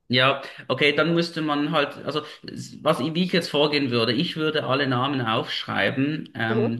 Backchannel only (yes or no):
yes